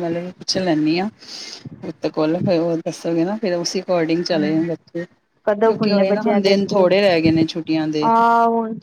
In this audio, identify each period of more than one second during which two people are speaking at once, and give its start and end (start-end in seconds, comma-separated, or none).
5.5-6.9